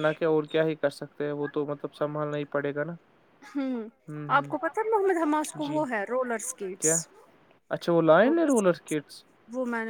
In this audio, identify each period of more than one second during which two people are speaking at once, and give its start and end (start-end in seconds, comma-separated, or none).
none